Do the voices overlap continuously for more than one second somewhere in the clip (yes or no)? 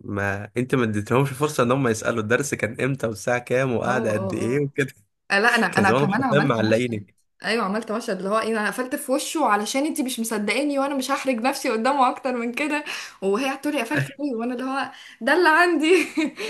yes